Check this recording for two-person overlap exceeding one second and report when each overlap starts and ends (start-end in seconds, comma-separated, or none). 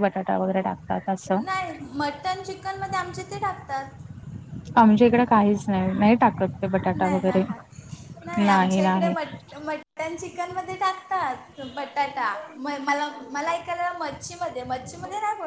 none